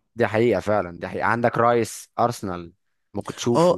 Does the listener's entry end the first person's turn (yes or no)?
yes